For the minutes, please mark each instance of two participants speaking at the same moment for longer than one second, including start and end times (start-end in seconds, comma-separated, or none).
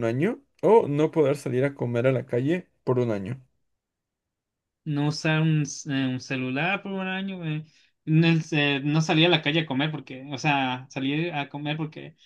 none